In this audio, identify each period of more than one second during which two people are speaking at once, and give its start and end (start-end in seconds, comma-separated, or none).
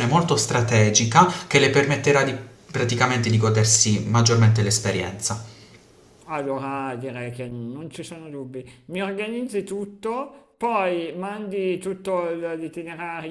none